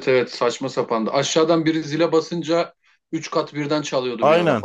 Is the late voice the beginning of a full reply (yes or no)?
yes